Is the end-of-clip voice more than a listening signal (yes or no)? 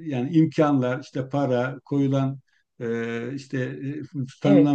no